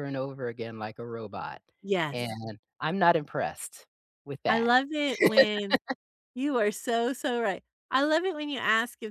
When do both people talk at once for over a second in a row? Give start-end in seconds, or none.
none